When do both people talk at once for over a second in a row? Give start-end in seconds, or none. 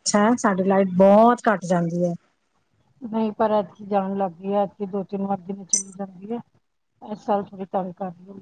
none